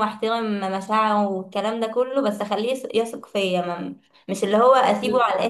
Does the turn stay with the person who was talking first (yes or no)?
yes